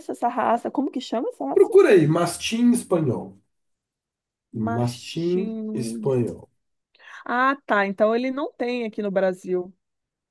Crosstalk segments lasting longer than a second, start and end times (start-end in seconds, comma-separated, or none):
4.6-6.1